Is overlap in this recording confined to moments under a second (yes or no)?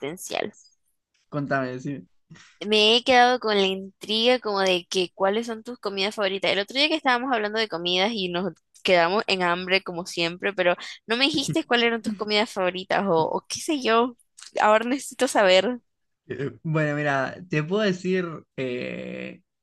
yes